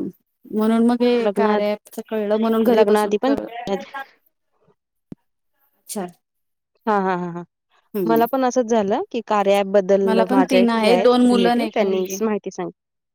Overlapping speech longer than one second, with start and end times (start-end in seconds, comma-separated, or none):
10.1-12.2